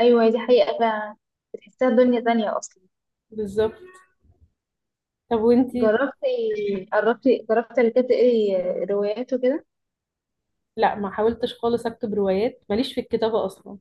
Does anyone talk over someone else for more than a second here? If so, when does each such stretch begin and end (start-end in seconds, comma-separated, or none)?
none